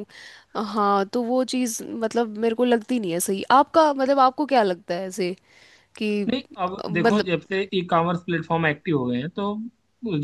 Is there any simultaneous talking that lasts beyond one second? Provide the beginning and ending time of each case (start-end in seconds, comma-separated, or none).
none